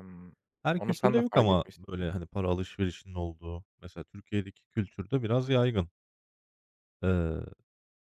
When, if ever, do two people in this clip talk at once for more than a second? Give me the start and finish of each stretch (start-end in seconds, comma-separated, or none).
0.8-2.1